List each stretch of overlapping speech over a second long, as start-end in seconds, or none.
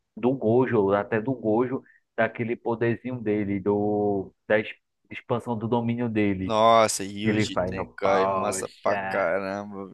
7.2-9.3